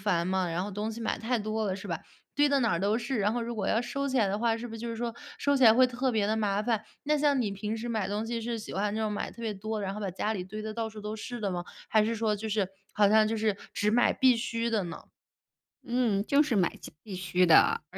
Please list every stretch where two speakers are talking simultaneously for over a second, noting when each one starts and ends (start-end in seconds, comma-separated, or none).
none